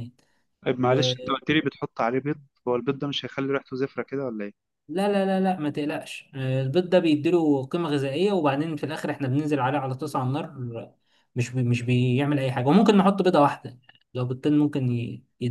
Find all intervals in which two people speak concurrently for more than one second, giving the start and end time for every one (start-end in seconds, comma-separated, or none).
none